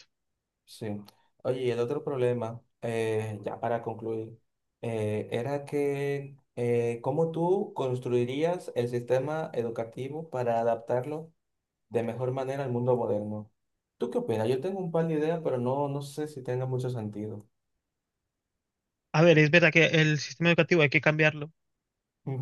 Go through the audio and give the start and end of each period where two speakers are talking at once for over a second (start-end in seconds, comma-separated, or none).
none